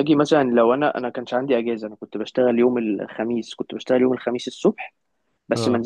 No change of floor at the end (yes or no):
yes